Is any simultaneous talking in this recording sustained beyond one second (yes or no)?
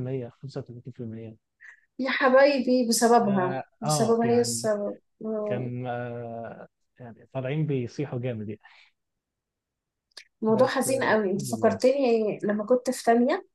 yes